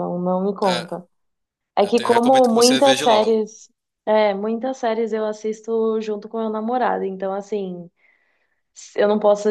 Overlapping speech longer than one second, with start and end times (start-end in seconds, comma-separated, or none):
1.8-3.4